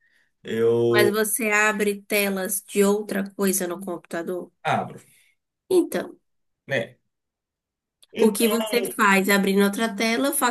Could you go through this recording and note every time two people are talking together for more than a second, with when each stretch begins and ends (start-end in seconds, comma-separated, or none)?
none